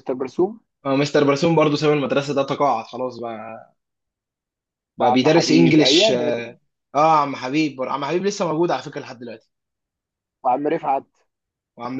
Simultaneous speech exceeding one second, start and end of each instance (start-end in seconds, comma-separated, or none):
5.0-6.5